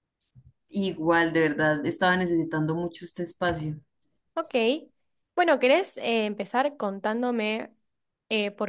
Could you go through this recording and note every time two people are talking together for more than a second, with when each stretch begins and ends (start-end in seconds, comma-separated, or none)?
none